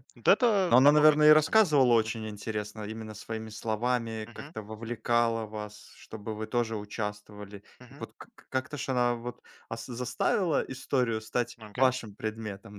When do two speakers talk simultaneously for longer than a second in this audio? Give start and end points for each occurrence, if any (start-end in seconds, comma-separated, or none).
0.7-2.3